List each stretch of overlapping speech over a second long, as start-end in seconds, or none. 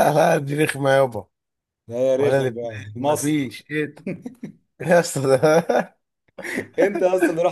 2.2-3.5